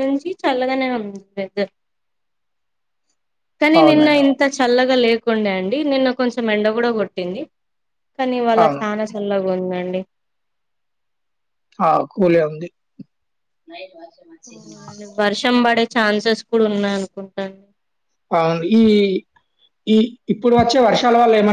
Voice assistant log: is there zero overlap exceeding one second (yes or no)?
yes